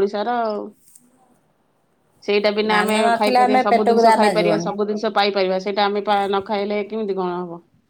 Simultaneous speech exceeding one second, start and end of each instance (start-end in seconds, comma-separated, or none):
2.7-4.7